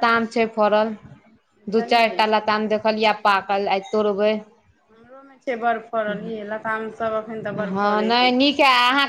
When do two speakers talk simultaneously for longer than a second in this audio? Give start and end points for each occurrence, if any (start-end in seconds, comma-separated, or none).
none